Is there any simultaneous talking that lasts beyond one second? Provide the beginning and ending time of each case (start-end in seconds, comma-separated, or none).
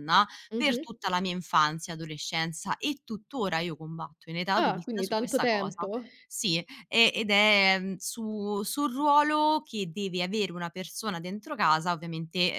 4.5-5.9